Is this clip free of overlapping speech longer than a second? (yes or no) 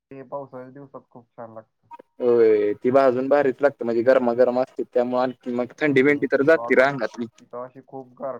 no